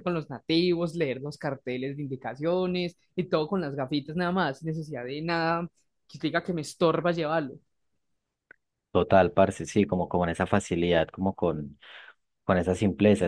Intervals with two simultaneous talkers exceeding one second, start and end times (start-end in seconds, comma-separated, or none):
none